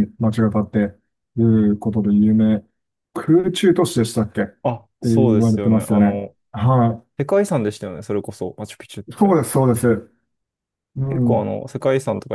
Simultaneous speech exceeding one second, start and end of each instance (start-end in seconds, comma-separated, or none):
5.1-6.3